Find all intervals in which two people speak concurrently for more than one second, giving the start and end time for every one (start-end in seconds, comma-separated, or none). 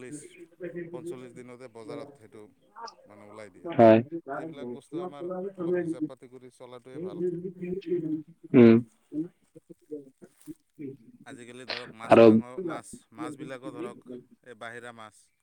3.8-5.0